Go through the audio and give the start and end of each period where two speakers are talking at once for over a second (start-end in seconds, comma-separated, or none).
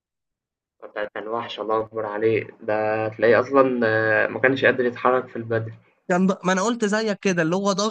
none